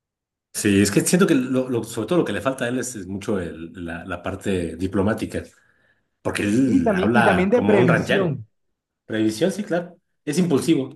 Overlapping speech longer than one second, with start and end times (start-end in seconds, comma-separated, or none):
6.7-8.3